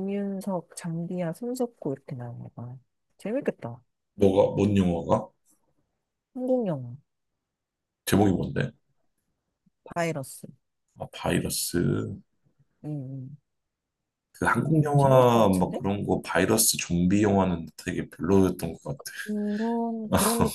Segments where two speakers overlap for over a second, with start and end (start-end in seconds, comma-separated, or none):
14.6-15.8